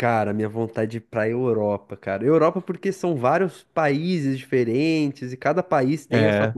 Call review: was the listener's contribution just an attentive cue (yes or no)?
yes